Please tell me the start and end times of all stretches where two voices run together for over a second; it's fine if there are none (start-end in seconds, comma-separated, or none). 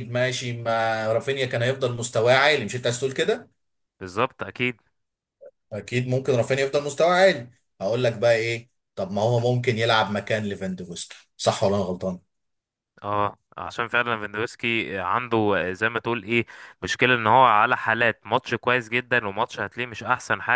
none